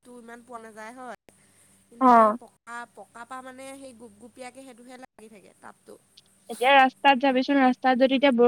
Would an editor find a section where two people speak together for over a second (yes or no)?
no